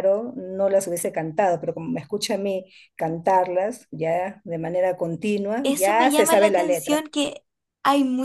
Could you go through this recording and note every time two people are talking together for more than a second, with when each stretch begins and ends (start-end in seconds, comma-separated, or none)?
5.6-7.0